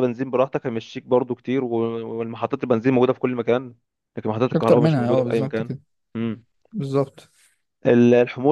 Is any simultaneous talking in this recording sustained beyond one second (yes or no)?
yes